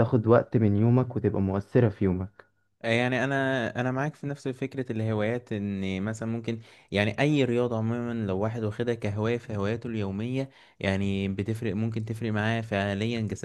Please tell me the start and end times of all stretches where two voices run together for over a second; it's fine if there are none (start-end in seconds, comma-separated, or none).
none